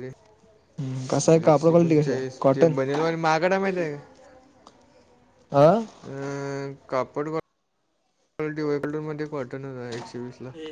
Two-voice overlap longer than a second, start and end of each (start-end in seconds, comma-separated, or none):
1.1-2.7